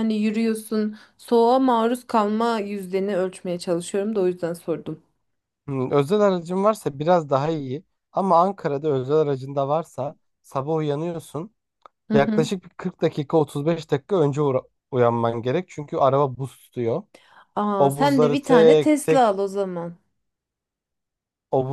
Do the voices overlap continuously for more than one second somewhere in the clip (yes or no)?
yes